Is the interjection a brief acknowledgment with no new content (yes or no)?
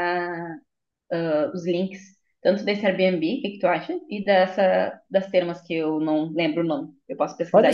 no